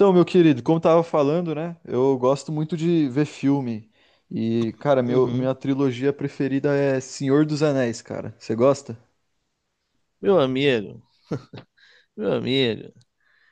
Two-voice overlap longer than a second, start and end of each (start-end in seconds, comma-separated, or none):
none